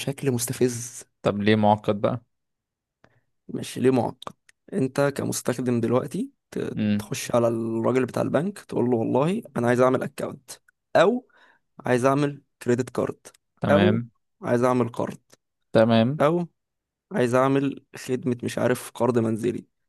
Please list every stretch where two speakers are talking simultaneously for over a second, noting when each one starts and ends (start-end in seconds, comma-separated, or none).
none